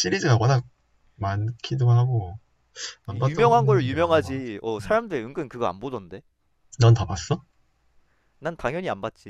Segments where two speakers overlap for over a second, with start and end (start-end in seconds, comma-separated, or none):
3.1-5.0